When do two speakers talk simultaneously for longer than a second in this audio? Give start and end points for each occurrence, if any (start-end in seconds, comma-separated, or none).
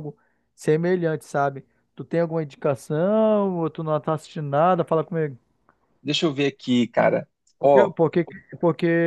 none